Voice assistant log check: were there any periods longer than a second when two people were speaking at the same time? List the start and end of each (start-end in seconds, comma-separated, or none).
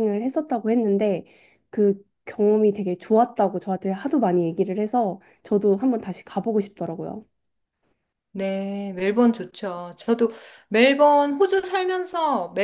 none